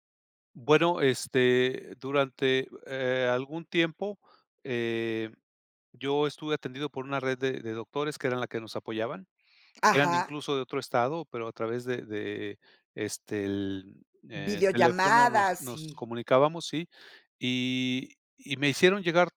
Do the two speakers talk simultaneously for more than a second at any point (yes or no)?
yes